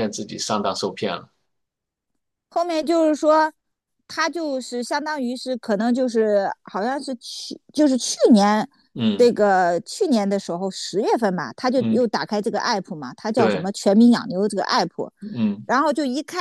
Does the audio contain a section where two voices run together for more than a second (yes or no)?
no